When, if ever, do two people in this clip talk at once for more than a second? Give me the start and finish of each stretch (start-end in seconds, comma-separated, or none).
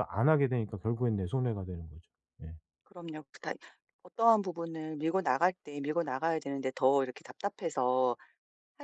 none